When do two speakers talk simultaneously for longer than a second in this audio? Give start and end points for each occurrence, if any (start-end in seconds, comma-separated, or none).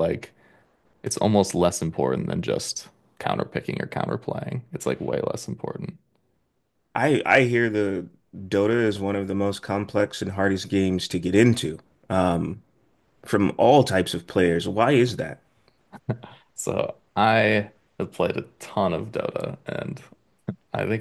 none